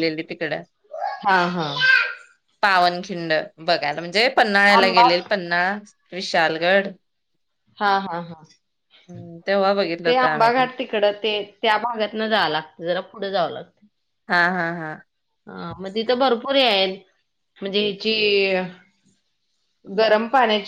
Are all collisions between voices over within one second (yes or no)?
yes